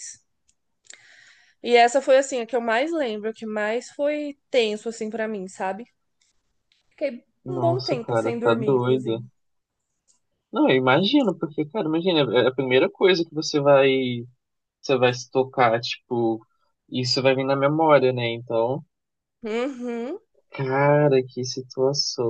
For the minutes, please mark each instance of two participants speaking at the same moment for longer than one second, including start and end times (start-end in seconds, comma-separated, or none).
7.5-9.2